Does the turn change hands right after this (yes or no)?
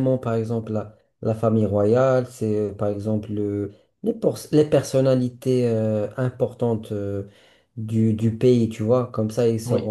no